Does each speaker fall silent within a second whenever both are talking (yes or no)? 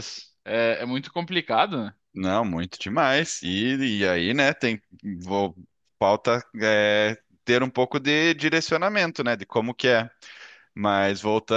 yes